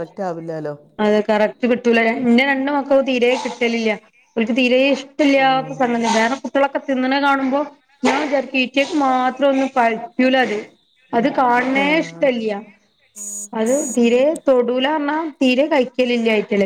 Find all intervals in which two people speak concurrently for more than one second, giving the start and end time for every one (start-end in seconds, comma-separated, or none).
none